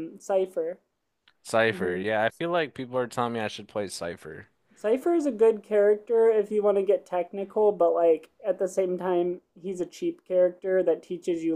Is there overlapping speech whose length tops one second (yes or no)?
no